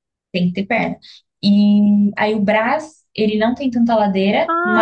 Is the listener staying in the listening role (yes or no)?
no